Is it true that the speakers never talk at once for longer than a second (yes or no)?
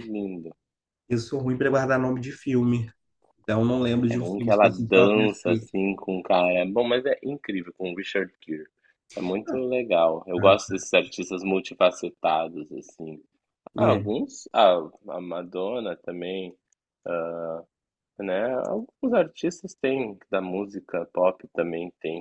no